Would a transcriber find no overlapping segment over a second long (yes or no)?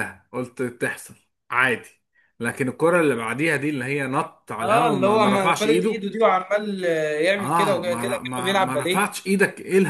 no